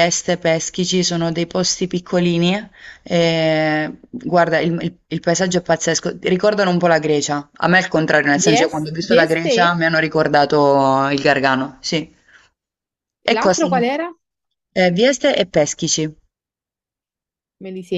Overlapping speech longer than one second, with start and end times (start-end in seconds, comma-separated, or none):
8.4-9.8